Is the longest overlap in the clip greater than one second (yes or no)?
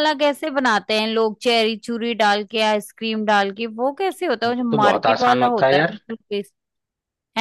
yes